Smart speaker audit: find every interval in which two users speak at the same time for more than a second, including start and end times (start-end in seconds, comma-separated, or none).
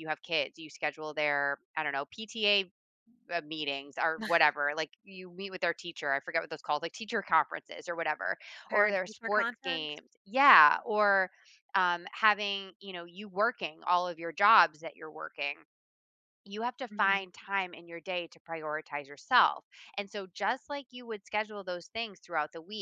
8.7-10.0